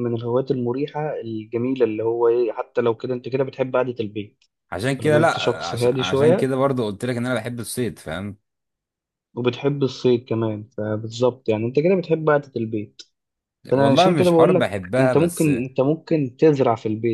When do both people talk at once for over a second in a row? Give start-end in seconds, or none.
5.0-6.5, 13.8-15.5